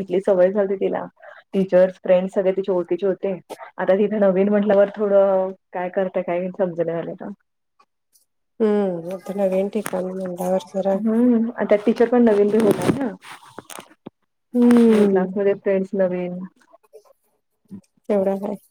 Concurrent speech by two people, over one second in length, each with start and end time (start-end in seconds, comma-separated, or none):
none